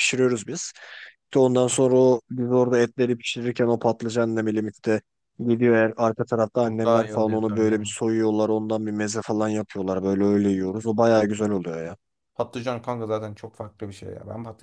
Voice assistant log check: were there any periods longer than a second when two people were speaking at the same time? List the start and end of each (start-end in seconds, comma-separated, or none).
6.7-8.0